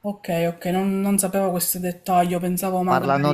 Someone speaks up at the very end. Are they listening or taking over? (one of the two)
taking over